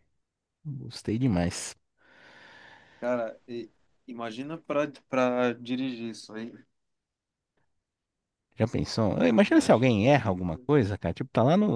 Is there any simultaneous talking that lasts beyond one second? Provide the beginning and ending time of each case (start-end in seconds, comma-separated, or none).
9.3-10.5